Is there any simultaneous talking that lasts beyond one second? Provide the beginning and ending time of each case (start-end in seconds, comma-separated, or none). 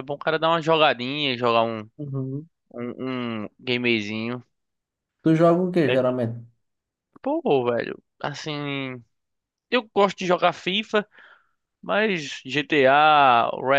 none